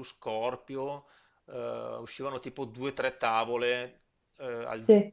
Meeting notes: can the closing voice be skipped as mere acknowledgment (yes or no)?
yes